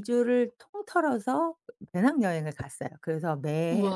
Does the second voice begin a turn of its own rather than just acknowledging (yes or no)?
no